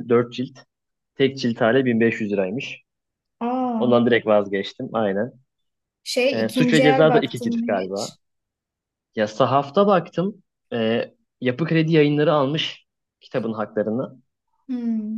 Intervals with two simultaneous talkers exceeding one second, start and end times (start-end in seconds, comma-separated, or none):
6.3-8.2